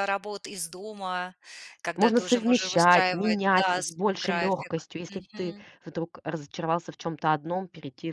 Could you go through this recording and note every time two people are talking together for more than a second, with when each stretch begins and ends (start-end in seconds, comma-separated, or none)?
2.0-5.7